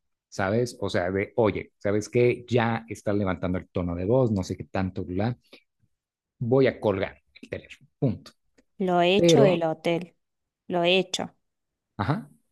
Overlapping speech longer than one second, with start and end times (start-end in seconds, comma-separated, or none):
none